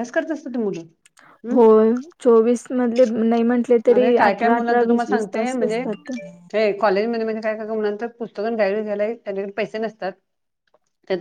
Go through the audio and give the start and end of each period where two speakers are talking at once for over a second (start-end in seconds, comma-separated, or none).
4.0-5.8